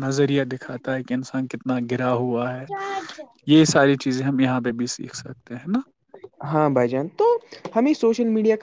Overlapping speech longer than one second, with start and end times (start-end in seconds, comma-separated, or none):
none